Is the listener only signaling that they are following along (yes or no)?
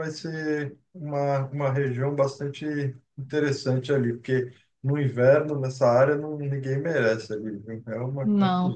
no